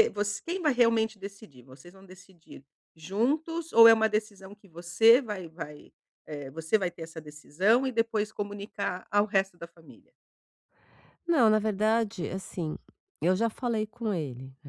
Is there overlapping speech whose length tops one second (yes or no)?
no